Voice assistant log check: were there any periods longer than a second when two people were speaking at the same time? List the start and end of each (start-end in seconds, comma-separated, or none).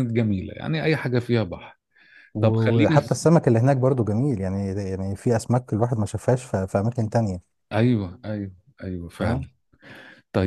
none